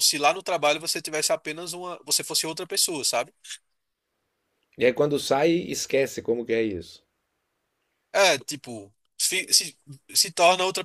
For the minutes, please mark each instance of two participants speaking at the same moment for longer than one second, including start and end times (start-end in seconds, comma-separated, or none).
none